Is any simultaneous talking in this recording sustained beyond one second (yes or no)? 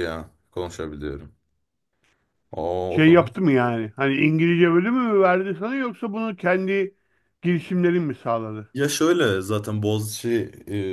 no